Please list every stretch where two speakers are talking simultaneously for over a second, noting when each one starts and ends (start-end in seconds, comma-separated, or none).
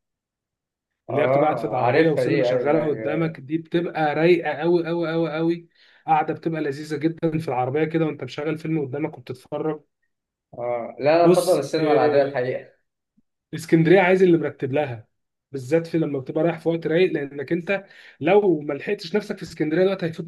1.1-3.4, 11.2-12.4